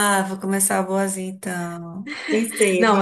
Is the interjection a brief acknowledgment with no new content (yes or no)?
no